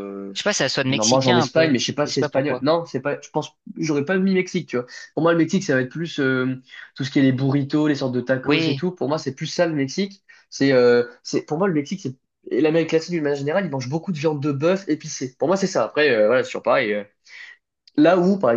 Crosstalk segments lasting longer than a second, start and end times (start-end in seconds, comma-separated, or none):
0.9-2.6